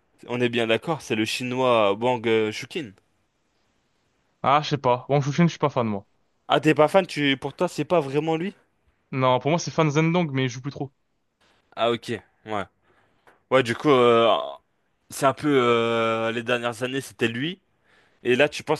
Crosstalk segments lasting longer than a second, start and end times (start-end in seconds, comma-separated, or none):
none